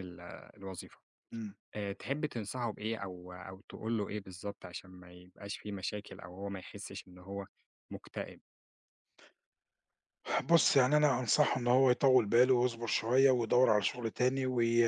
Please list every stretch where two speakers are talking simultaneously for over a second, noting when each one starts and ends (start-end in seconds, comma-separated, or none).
none